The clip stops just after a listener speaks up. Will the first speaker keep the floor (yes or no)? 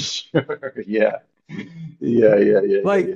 no